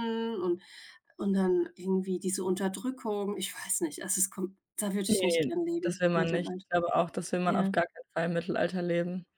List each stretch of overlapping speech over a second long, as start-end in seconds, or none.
5.1-6.6